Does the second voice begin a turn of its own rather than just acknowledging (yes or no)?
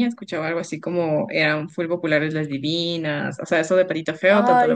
no